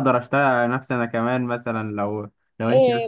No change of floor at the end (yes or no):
no